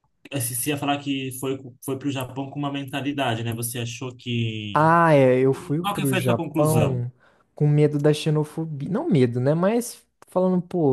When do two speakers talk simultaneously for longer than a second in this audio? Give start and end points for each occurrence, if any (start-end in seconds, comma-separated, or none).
5.8-7.0